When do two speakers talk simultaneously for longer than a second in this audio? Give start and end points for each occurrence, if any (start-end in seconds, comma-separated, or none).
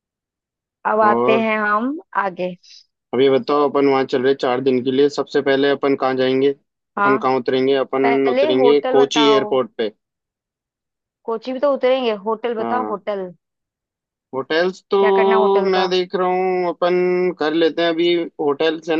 8.0-9.6